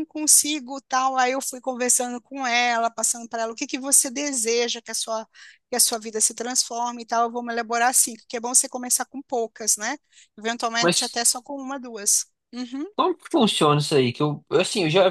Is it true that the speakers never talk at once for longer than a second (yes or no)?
yes